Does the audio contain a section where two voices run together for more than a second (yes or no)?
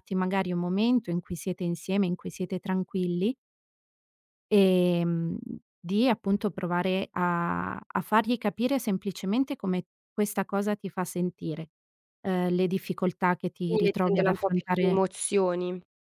yes